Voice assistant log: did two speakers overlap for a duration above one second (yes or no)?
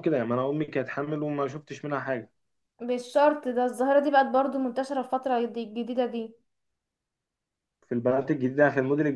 no